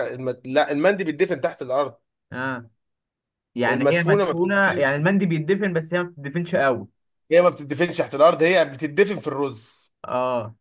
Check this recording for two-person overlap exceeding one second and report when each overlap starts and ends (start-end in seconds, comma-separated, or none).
3.7-5.0